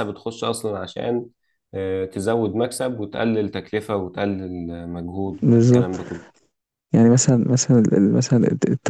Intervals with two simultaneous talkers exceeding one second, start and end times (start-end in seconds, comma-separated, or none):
none